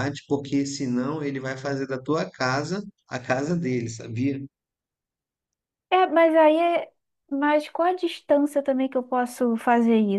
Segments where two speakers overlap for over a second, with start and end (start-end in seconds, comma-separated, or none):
none